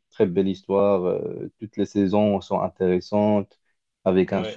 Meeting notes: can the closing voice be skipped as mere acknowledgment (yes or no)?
yes